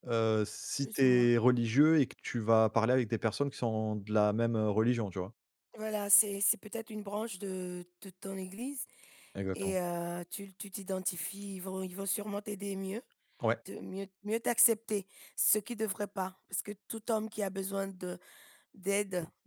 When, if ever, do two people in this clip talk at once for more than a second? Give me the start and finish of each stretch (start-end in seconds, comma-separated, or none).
none